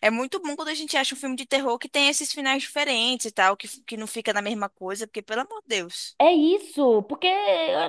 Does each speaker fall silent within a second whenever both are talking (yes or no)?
yes